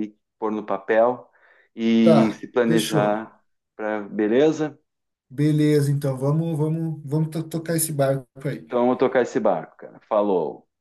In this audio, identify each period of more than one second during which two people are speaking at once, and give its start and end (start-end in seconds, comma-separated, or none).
2.0-3.3